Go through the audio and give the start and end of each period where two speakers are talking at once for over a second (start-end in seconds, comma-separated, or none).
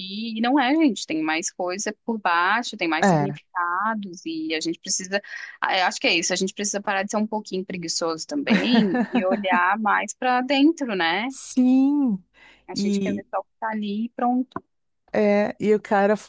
none